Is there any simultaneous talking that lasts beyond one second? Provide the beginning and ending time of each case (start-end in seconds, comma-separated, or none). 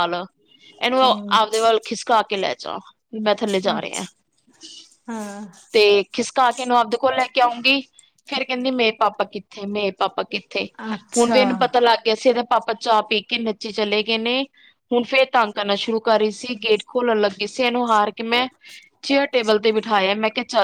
10.6-11.8